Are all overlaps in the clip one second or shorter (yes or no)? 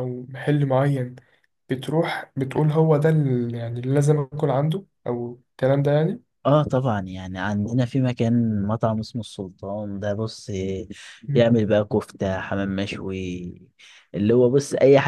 yes